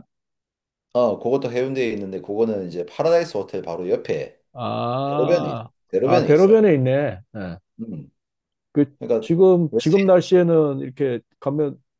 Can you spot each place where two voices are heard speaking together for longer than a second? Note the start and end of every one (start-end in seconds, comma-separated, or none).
5.1-6.6